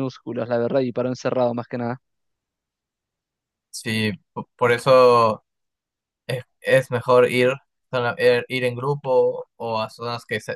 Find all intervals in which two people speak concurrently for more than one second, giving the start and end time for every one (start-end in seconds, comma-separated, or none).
none